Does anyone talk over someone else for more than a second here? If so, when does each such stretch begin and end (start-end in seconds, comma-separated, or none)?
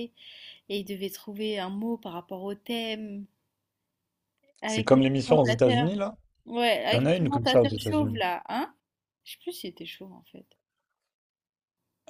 4.7-6.0, 6.9-8.2